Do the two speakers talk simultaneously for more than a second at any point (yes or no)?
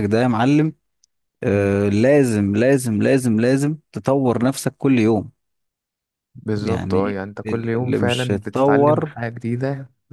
yes